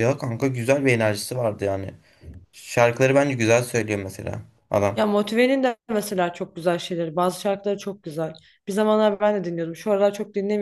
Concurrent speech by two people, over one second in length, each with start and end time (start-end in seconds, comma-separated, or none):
none